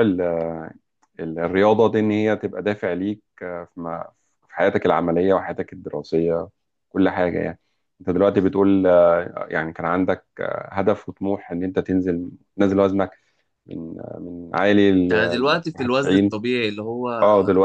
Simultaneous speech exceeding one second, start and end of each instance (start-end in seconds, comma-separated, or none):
15.1-16.4